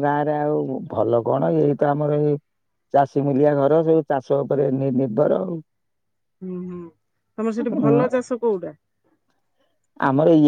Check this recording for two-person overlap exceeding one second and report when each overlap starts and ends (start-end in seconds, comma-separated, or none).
none